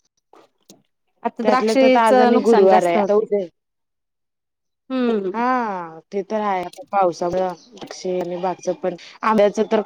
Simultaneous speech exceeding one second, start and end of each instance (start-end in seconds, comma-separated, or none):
1.4-3.2